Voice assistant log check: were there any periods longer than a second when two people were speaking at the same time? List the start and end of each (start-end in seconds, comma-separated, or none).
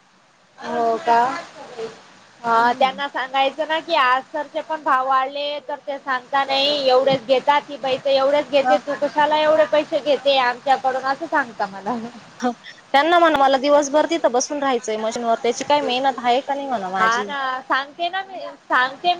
none